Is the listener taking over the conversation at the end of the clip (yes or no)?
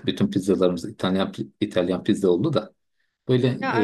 no